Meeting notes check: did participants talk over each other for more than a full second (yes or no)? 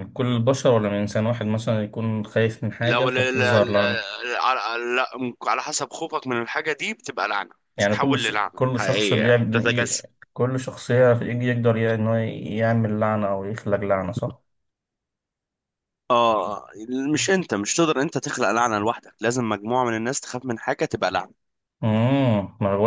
yes